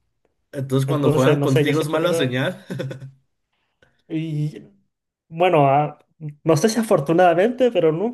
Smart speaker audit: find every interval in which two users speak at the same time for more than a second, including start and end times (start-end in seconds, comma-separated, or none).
0.9-2.4